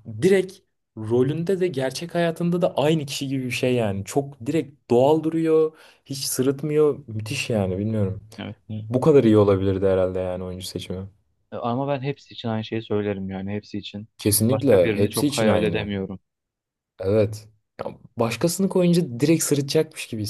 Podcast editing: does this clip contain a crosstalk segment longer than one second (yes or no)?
yes